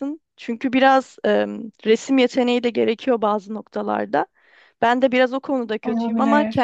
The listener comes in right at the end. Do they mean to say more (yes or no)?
no